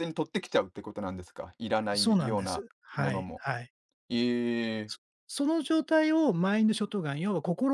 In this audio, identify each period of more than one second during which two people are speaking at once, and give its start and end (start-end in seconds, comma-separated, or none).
1.9-3.4